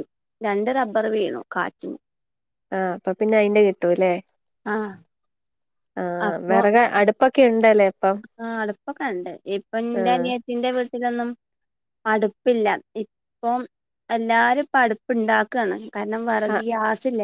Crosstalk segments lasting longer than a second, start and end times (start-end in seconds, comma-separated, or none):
none